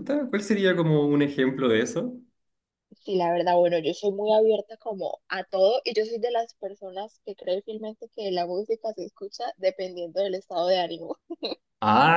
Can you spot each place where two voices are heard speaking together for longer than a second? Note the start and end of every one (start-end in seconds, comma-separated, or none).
none